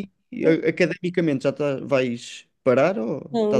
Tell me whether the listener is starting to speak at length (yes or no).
yes